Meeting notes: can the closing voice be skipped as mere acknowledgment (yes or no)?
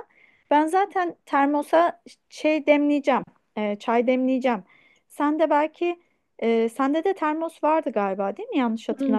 no